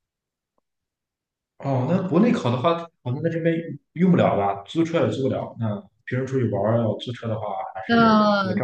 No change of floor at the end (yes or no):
no